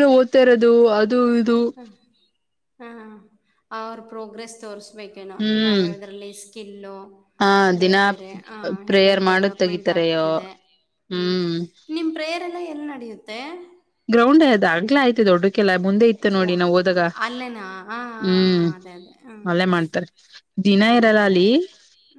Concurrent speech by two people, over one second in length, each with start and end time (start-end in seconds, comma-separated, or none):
9.0-10.3